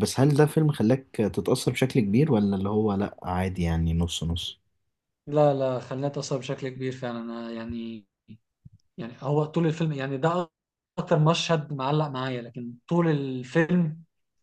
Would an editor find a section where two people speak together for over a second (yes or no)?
no